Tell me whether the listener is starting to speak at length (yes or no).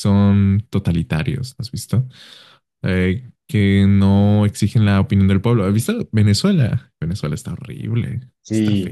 yes